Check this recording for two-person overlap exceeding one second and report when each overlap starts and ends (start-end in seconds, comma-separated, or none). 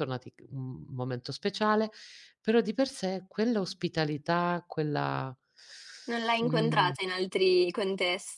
none